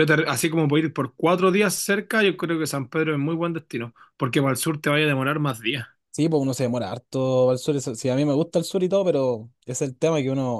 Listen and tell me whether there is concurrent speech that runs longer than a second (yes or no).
no